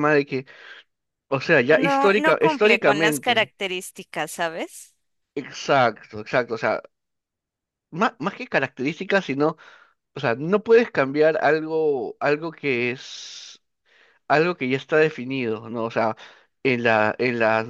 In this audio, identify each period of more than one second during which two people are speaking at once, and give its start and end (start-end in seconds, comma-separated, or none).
1.8-3.5